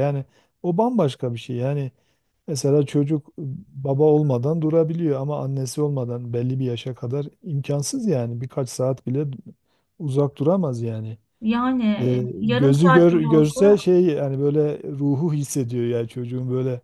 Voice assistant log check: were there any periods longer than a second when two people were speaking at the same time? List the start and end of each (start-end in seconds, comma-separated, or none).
12.0-13.6